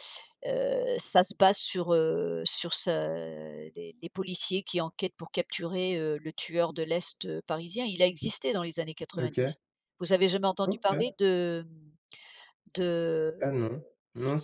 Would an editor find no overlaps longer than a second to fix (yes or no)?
yes